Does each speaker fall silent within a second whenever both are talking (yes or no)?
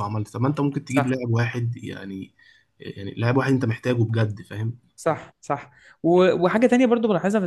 yes